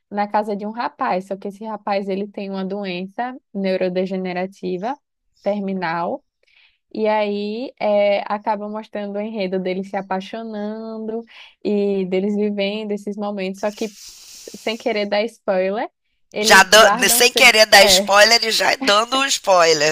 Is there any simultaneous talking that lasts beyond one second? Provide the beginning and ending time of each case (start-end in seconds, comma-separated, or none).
16.4-18.1